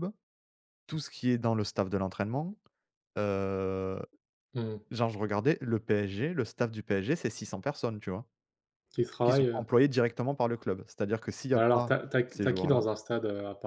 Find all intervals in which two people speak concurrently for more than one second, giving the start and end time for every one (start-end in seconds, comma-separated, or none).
11.6-12.8